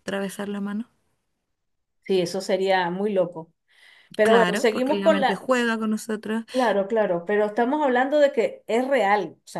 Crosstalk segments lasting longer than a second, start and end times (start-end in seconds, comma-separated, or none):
4.2-5.5